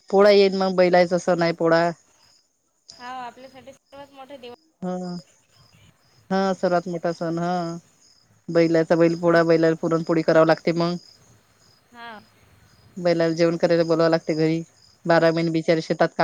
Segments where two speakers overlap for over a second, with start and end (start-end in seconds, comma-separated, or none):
none